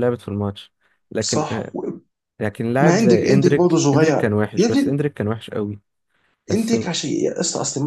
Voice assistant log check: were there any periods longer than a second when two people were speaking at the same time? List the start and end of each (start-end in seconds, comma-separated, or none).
2.8-5.0